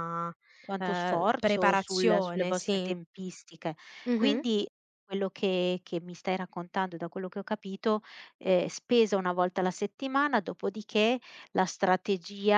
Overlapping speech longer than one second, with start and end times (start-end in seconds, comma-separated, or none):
0.8-2.9